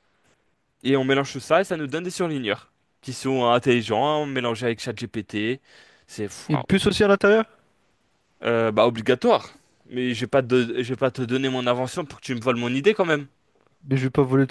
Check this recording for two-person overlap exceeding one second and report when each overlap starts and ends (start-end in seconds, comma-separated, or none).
none